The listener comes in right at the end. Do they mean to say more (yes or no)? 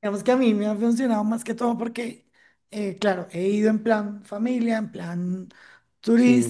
no